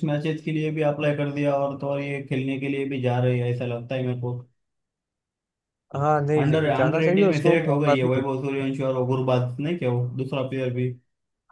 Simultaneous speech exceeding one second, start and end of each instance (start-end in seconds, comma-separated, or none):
6.4-8.2